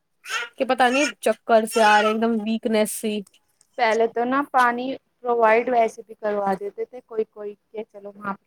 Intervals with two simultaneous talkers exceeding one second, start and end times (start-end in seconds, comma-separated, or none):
none